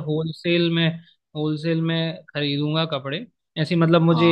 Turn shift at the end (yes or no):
no